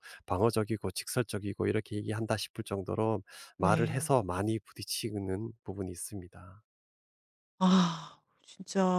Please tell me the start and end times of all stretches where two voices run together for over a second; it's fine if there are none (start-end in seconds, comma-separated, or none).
none